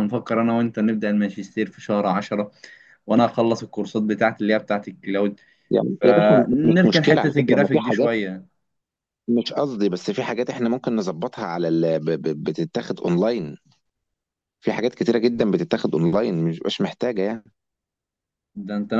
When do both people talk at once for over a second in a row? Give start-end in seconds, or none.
6.0-8.1